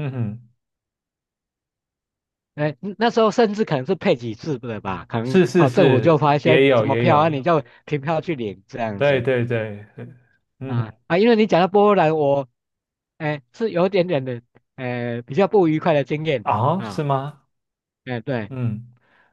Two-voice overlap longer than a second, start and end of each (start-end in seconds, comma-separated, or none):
5.2-7.3